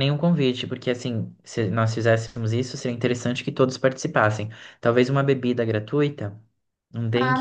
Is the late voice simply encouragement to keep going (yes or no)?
no